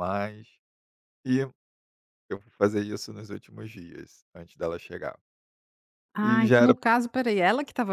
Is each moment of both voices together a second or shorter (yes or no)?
yes